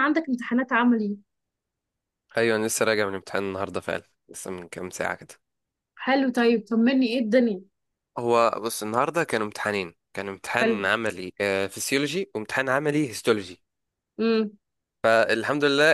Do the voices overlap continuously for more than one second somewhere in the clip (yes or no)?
no